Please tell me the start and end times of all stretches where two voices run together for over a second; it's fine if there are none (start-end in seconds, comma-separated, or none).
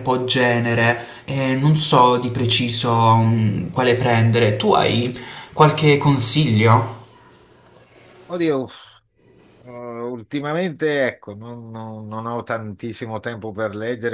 none